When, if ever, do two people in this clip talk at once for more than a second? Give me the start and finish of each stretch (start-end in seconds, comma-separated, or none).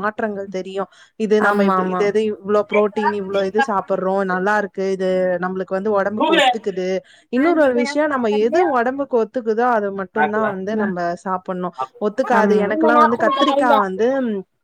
12.4-13.8